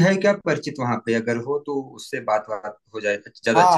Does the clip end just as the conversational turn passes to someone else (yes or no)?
yes